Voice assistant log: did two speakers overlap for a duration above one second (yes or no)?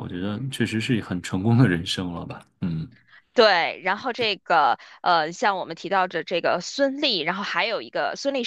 no